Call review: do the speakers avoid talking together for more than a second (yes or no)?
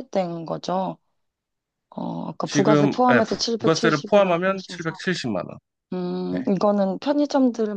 no